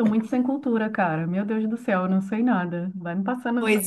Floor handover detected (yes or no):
yes